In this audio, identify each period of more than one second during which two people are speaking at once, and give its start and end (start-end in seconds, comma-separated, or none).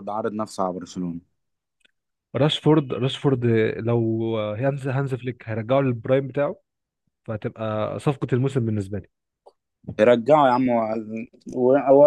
none